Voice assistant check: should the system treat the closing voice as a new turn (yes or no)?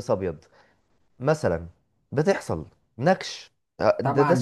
yes